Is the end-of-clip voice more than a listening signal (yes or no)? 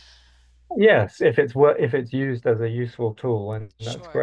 yes